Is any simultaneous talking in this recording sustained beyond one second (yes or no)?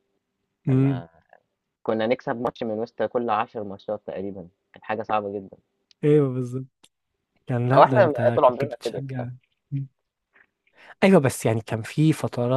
yes